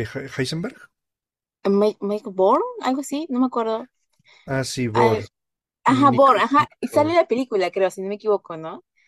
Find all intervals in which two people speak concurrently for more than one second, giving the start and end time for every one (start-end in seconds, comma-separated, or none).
5.9-7.2